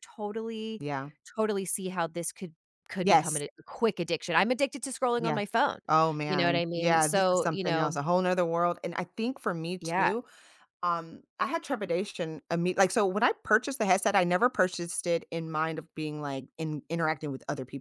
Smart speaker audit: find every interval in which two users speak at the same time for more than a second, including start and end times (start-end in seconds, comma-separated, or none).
6.3-8.0